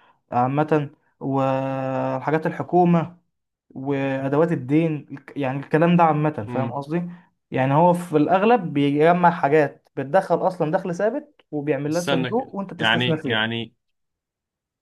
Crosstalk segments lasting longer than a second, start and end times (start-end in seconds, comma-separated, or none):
11.9-13.4